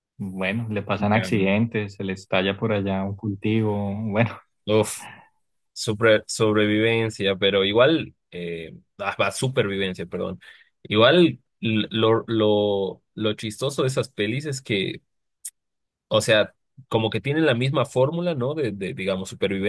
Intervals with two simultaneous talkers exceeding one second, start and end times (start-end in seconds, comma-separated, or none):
none